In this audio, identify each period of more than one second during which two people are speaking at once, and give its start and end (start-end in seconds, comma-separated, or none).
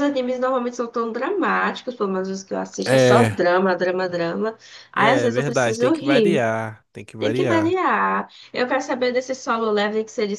5.0-6.4